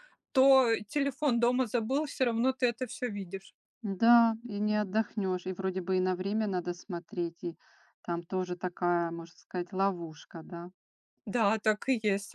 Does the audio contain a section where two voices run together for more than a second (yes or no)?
no